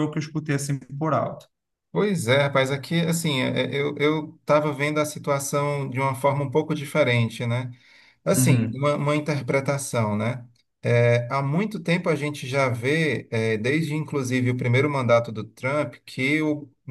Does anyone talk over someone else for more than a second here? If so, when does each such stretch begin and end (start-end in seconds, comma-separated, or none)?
none